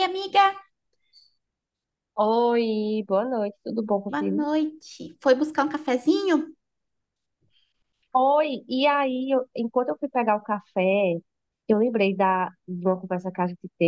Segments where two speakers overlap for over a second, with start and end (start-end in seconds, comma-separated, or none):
none